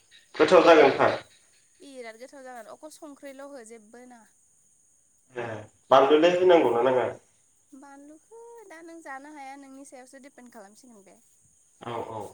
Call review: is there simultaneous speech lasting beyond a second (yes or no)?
no